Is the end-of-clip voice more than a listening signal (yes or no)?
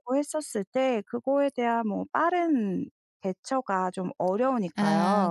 yes